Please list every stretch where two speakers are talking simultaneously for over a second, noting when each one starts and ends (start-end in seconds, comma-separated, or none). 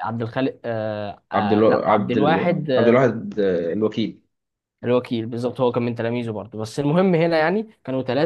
1.3-3.0